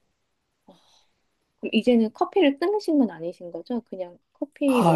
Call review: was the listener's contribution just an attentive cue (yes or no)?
no